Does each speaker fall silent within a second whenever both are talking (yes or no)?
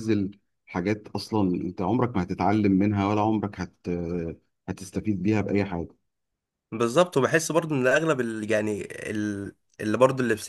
yes